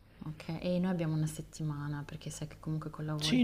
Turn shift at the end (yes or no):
yes